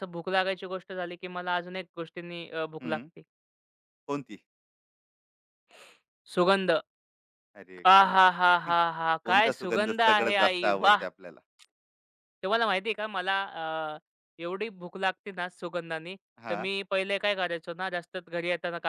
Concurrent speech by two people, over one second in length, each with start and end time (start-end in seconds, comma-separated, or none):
9.2-11.1